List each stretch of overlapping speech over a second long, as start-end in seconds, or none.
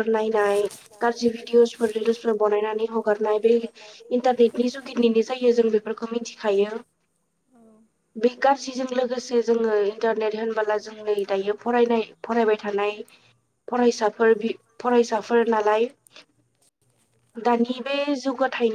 1.6-3.6